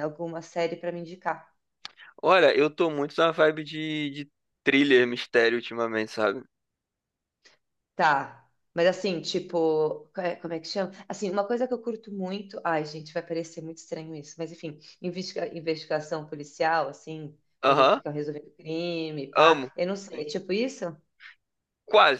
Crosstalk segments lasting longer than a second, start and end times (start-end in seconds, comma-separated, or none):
none